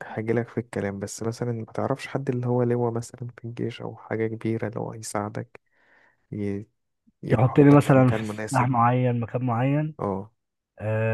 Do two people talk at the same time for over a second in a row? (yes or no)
yes